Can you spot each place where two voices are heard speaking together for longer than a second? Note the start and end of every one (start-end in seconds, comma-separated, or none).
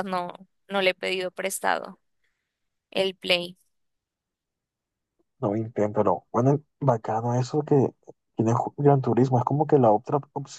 none